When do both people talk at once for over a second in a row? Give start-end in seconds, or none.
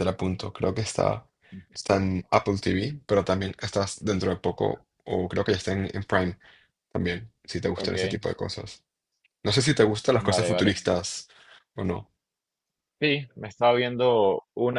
none